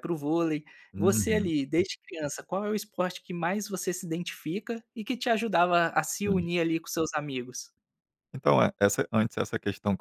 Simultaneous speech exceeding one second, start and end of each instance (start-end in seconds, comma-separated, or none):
none